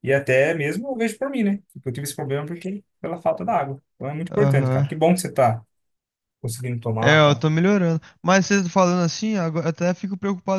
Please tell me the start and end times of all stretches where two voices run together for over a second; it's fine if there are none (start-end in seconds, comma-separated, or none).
none